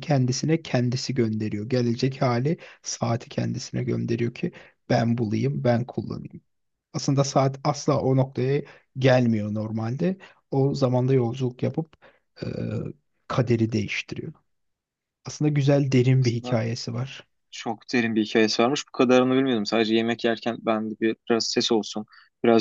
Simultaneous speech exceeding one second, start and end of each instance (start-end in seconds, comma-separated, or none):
none